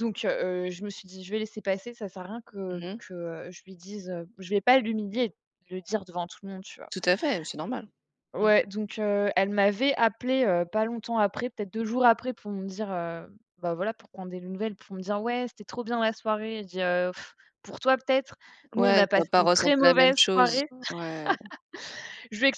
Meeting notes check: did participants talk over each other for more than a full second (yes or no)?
yes